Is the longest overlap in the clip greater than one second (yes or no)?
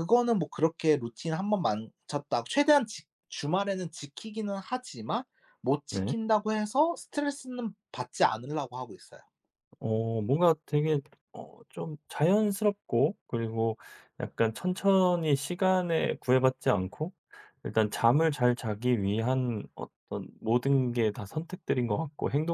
no